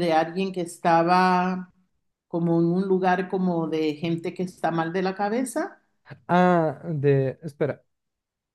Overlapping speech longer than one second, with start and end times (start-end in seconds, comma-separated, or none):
none